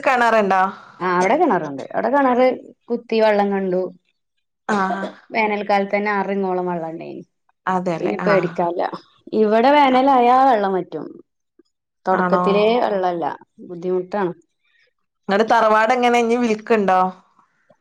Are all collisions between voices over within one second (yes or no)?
yes